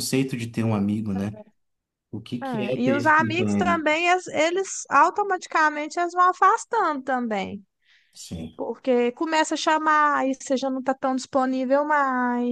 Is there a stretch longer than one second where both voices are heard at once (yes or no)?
yes